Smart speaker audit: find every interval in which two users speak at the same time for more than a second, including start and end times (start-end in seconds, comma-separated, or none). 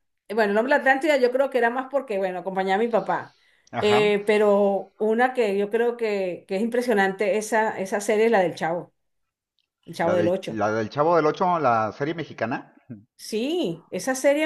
none